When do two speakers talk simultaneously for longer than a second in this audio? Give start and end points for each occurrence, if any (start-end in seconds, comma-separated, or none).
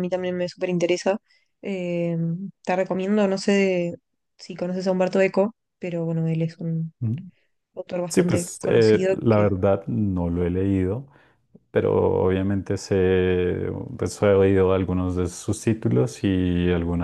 8.1-9.5